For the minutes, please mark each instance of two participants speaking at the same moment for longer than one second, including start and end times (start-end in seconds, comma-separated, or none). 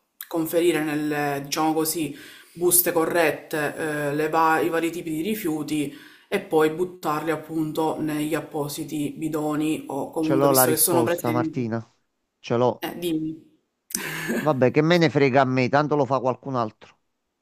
10.2-11.8